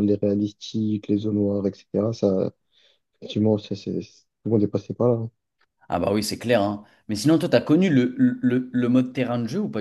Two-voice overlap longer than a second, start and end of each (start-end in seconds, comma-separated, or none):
none